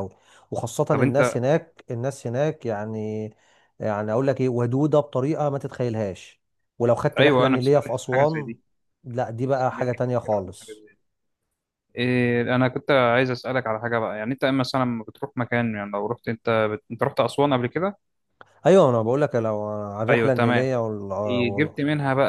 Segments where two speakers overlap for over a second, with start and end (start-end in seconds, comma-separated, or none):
7.2-8.5, 9.5-10.8